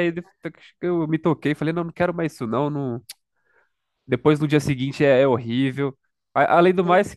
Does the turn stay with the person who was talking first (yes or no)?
yes